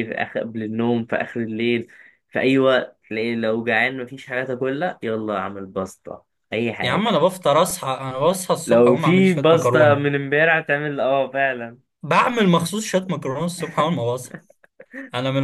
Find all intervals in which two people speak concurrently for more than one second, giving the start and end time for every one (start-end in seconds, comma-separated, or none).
8.7-10.0